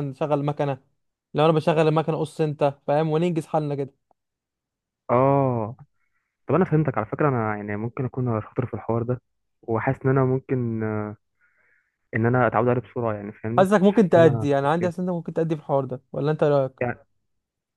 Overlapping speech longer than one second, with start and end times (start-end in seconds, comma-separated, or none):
13.6-15.1